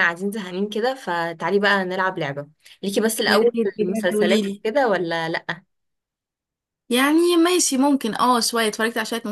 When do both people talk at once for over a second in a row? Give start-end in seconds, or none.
3.3-4.6